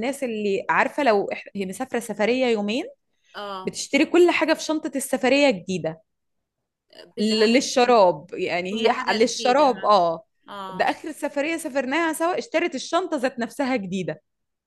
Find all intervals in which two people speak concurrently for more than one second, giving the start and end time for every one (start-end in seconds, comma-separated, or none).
8.7-10.0